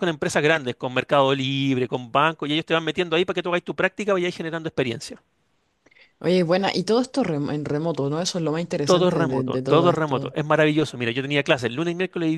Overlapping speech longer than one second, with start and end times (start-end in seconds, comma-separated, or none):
8.8-10.3